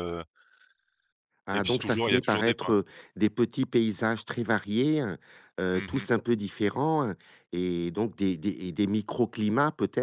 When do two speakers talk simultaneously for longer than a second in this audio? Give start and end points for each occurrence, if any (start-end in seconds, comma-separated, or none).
1.5-2.7